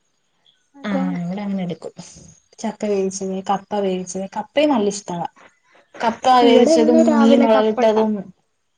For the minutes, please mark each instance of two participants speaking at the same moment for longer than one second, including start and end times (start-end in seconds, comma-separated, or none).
6.5-8.1